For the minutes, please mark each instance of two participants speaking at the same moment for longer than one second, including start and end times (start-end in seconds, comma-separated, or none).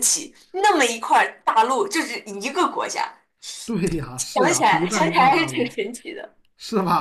4.3-5.8